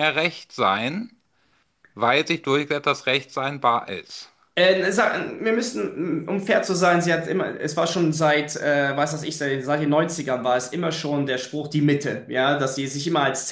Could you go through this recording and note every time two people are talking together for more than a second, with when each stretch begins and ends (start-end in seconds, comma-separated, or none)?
none